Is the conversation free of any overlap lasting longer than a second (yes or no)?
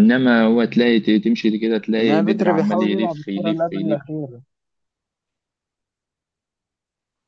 no